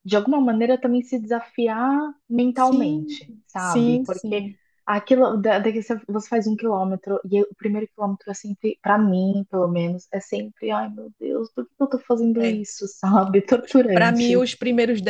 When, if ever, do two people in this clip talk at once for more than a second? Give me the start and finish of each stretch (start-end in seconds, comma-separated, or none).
2.5-4.5